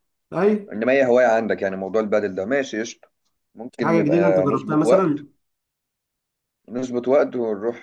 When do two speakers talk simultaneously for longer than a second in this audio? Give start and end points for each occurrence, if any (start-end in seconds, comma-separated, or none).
3.8-5.2